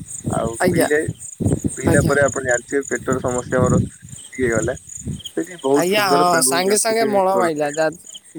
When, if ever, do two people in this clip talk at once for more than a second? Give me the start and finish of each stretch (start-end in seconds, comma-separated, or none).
5.8-7.7